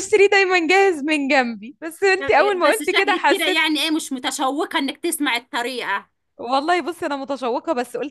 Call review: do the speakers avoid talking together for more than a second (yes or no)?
no